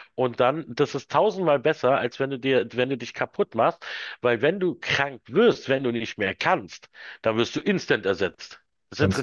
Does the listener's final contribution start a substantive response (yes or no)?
no